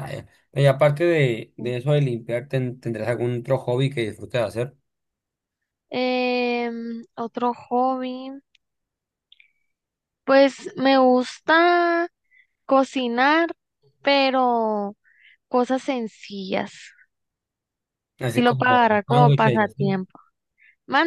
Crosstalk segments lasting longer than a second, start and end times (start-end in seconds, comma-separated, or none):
18.3-20.0